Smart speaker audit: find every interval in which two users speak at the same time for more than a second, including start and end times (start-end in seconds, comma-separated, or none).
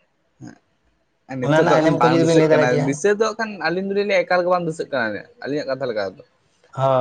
1.4-2.9